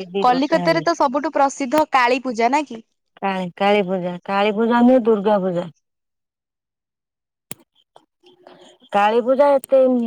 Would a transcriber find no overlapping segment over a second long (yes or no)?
yes